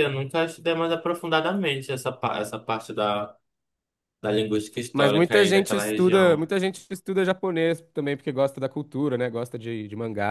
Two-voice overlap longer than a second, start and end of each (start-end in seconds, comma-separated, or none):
4.9-6.5